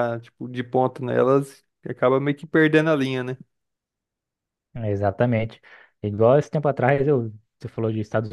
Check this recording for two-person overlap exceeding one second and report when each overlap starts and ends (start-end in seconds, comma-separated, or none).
none